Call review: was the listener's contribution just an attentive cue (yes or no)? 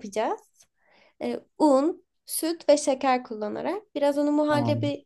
yes